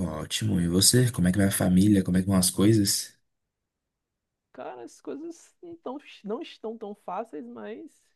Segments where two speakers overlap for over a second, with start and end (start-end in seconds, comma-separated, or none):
none